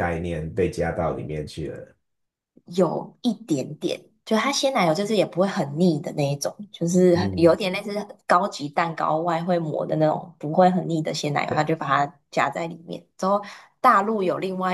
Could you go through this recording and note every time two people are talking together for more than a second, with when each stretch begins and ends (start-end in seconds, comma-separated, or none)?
none